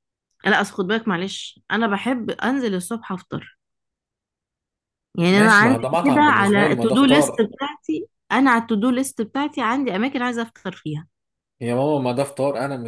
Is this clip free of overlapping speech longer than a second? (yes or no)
no